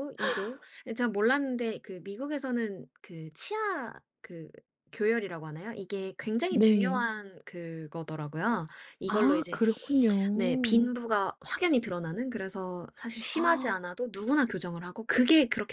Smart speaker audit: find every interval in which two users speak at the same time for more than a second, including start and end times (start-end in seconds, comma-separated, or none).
none